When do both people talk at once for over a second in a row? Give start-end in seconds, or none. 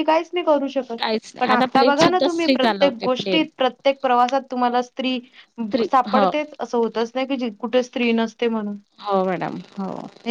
1.4-3.4